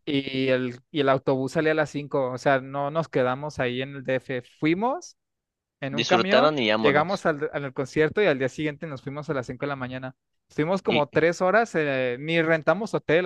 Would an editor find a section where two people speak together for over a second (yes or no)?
yes